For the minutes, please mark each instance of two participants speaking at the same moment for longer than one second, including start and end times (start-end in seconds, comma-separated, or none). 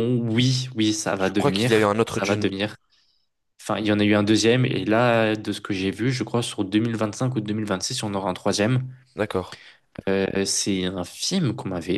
1.2-2.5